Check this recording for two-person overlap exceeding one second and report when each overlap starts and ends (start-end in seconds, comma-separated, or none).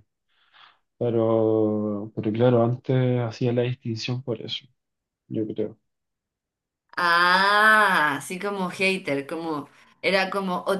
none